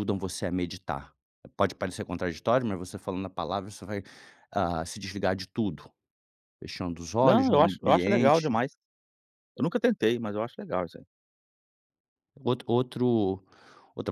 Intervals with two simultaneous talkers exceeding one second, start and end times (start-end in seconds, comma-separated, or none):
7.2-8.6